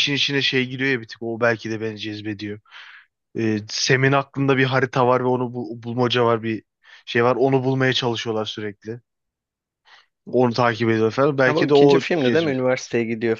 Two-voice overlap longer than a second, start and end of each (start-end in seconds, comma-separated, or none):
11.4-12.7